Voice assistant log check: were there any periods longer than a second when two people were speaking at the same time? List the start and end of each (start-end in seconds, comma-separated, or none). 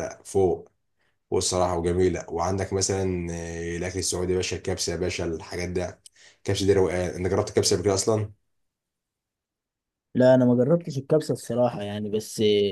none